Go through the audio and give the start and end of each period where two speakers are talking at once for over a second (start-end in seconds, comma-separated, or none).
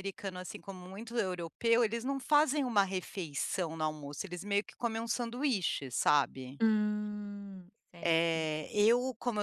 none